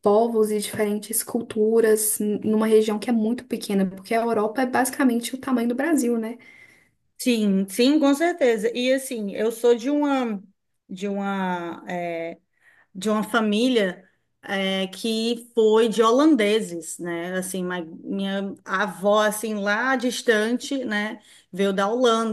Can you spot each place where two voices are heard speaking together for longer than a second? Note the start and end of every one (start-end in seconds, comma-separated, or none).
none